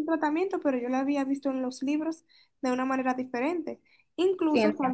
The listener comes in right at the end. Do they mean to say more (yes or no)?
no